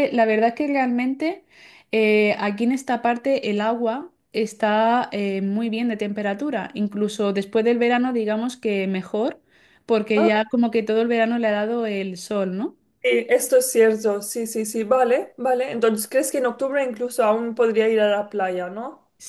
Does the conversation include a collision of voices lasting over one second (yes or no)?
no